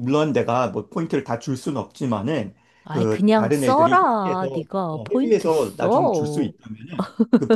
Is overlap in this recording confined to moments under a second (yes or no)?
no